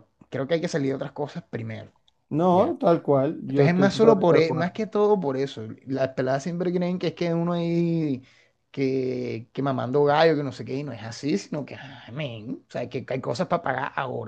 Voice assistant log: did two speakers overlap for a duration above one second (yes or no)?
yes